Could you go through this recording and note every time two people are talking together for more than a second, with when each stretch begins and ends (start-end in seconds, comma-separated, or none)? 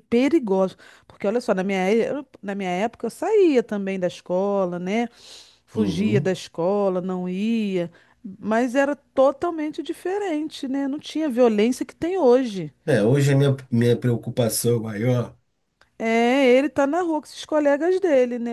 none